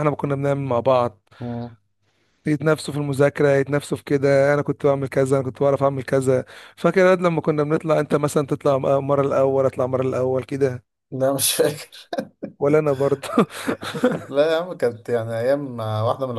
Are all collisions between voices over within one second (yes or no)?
yes